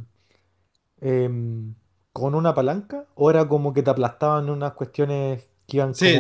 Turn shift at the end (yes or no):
yes